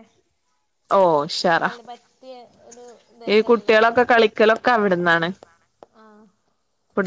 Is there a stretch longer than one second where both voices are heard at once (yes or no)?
no